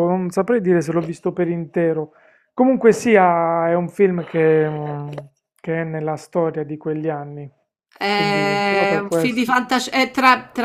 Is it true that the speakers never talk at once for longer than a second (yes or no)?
no